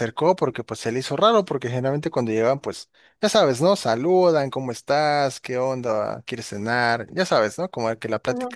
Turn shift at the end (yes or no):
no